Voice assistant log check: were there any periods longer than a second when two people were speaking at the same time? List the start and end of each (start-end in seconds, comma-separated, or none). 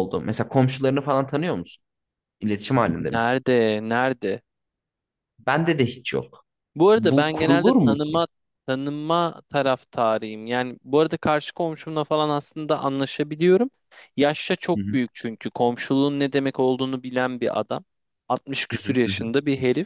7.0-8.2